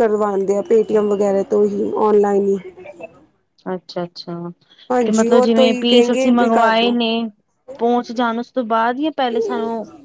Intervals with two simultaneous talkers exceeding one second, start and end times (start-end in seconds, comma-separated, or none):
5.0-7.0